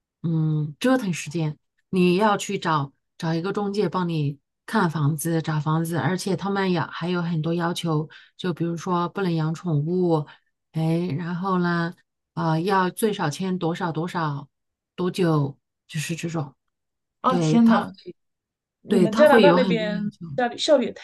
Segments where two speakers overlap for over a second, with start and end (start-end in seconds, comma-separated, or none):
18.9-20.2